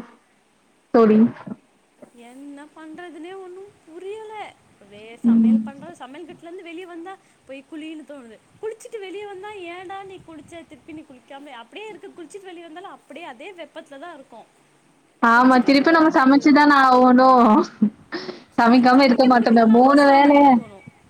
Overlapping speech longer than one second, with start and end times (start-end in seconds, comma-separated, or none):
18.6-20.4